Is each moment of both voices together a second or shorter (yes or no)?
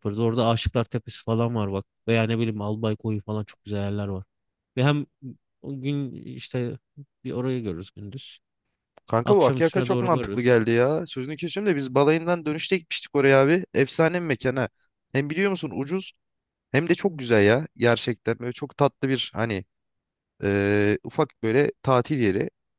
no